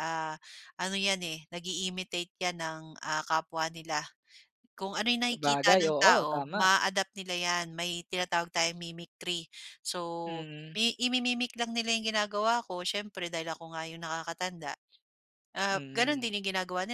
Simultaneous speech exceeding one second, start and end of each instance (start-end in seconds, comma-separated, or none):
5.3-6.7